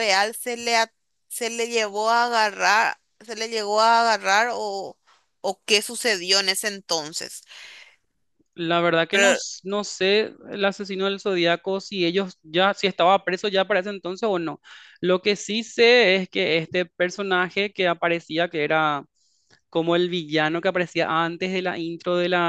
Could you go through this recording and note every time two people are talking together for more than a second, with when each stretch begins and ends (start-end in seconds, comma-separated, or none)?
none